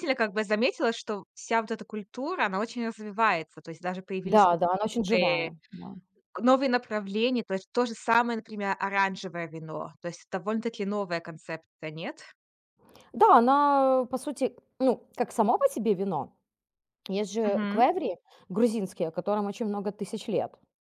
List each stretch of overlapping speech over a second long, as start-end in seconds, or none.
4.2-5.5